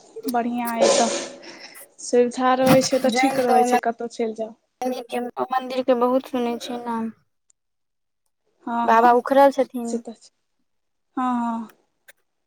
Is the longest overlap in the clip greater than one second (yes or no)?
no